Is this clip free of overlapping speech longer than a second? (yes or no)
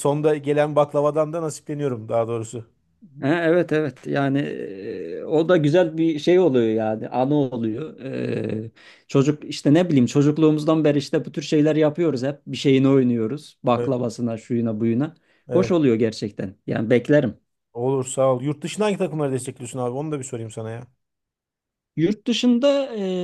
yes